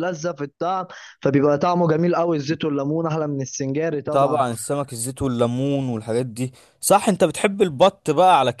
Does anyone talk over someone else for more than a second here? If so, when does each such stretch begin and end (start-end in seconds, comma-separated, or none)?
none